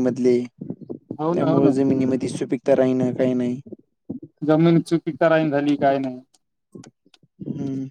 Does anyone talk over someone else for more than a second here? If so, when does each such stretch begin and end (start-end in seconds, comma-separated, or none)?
none